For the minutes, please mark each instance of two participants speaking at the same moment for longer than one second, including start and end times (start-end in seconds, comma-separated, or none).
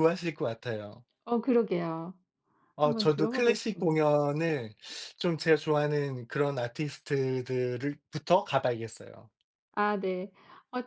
2.8-4.0